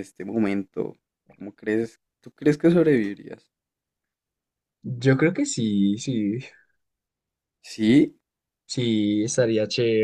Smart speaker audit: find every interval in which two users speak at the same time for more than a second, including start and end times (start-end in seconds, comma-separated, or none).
none